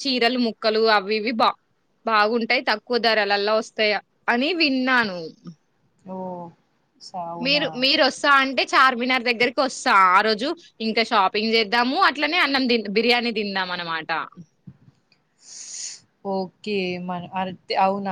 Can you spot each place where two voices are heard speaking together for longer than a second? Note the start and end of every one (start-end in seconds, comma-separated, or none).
none